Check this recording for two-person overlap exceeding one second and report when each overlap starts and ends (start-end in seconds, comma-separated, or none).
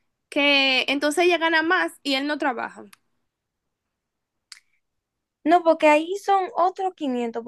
none